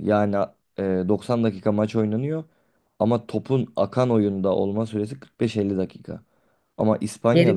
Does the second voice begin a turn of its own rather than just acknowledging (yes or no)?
yes